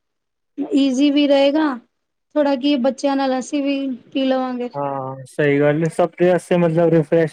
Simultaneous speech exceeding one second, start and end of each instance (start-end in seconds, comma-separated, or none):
none